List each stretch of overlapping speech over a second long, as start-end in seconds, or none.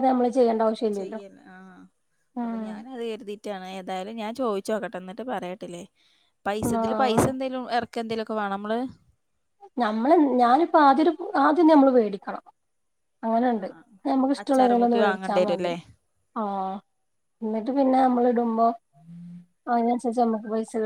14.4-15.7